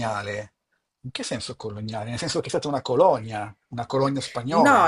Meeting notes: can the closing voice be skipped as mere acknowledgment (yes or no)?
no